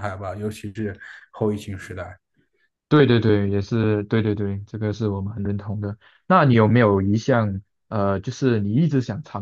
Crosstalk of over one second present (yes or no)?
no